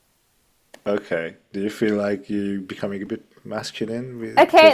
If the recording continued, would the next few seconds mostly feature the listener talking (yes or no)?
yes